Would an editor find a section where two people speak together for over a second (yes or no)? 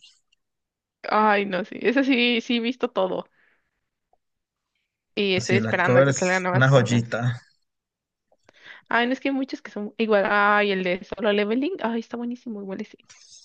yes